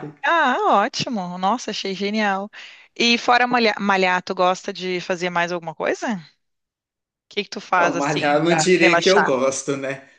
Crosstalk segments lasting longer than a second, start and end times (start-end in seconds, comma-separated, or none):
7.8-9.3